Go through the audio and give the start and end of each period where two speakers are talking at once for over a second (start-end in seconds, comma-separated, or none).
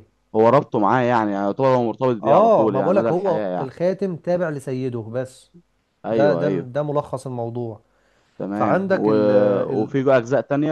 2.2-3.7